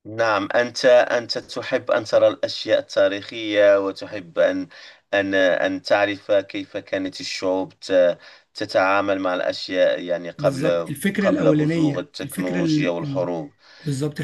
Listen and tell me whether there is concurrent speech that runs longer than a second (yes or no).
yes